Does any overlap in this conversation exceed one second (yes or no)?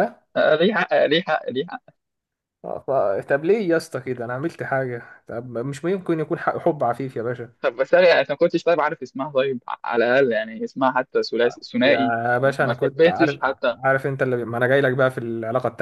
yes